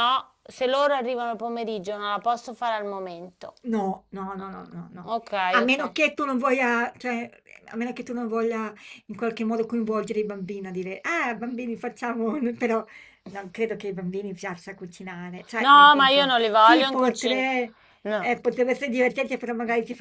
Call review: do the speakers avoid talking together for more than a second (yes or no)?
no